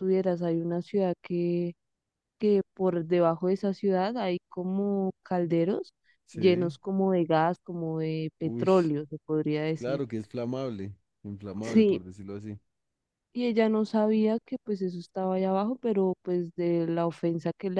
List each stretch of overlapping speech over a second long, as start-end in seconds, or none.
none